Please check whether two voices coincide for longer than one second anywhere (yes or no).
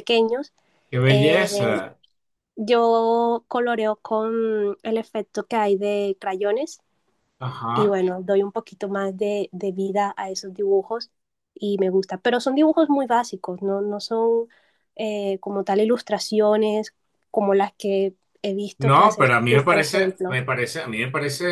yes